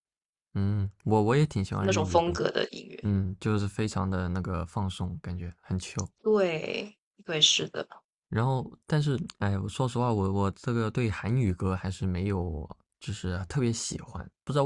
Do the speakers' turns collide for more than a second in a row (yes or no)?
no